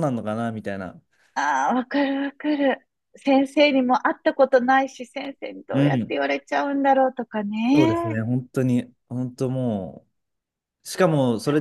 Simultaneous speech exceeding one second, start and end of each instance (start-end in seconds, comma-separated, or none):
none